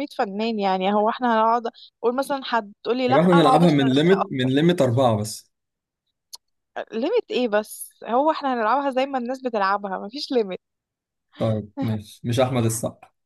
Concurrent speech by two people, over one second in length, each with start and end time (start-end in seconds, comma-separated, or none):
3.1-4.5